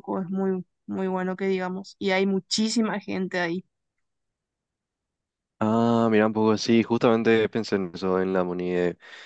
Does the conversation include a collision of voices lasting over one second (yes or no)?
no